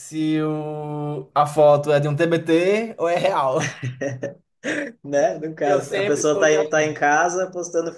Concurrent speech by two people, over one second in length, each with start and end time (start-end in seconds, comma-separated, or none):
5.6-6.9